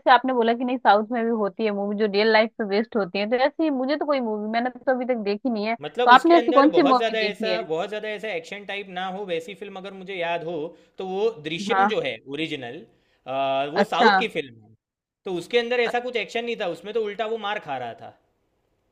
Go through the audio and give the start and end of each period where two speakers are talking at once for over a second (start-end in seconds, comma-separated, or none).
5.8-7.6